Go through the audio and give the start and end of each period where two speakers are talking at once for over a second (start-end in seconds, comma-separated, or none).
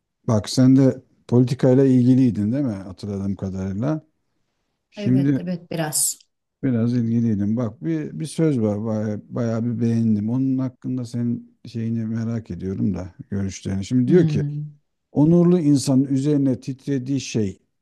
none